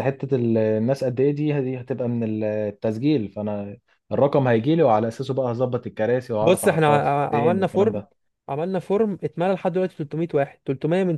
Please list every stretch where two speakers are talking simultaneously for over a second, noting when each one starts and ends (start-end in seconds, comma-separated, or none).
6.4-8.0